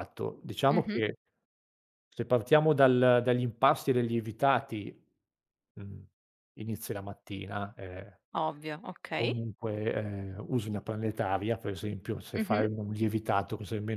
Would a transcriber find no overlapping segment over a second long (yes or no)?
yes